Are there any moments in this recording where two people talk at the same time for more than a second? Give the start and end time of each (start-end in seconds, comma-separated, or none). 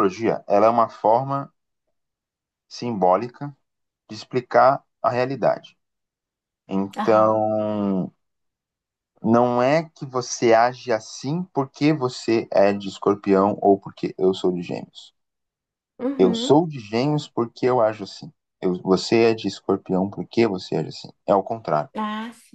none